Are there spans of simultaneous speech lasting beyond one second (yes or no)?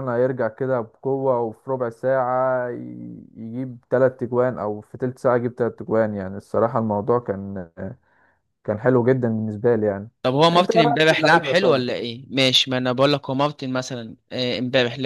yes